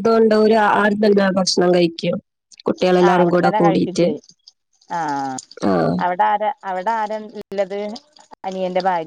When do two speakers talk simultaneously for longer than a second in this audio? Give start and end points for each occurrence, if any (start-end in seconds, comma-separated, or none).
none